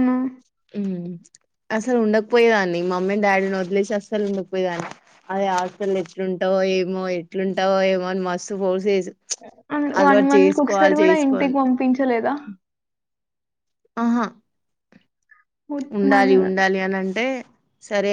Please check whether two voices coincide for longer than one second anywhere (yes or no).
yes